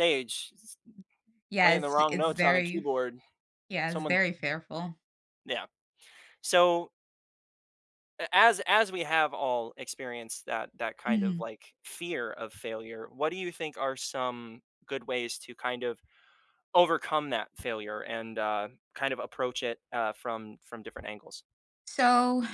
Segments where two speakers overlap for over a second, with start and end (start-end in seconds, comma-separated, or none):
1.6-2.9